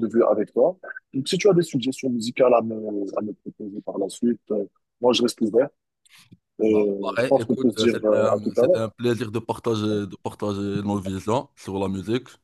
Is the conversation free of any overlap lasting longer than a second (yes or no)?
no